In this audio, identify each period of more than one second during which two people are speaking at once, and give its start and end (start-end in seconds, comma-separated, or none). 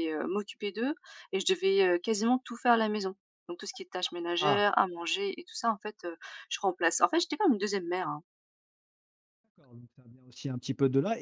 none